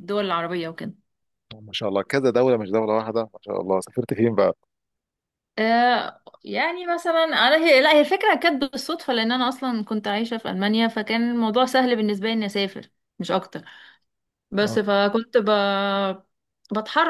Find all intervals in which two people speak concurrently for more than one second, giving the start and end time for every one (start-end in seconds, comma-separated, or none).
none